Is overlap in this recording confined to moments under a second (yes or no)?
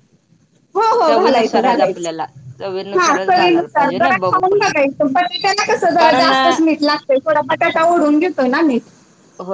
no